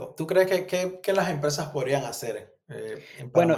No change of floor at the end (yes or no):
no